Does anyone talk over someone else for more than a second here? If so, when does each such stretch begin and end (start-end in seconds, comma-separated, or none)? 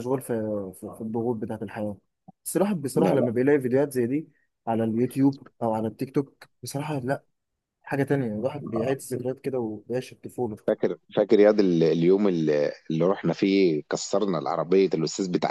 none